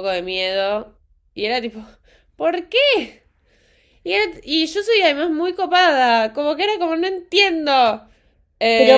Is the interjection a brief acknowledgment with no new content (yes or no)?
no